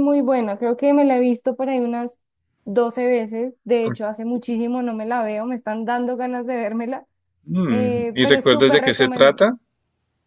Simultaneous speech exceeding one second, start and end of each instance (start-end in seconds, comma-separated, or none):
7.7-9.5